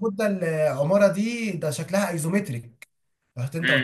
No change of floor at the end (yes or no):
no